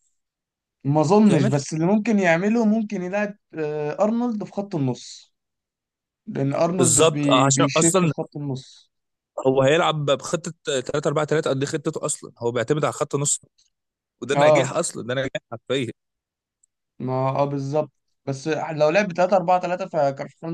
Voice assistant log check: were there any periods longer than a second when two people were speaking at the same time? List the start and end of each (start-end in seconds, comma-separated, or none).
6.8-8.1